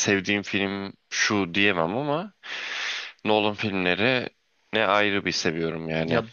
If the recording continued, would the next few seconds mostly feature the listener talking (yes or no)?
yes